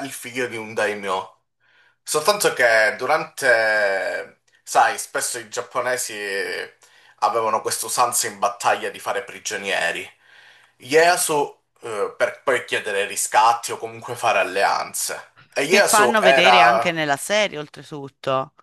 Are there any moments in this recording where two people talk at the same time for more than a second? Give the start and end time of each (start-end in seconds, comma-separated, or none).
15.7-16.9